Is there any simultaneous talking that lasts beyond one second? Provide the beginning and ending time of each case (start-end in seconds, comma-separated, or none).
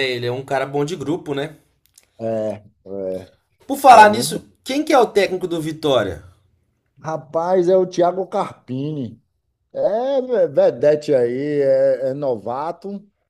none